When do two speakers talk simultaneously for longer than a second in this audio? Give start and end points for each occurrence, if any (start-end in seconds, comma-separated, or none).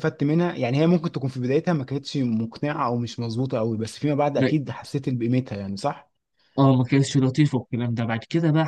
none